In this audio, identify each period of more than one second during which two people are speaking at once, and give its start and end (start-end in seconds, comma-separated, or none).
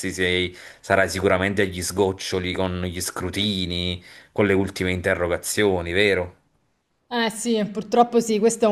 none